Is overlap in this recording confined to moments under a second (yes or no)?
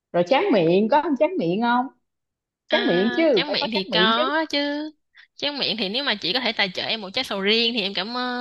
no